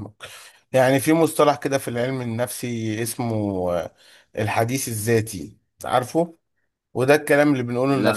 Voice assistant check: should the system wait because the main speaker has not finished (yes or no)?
yes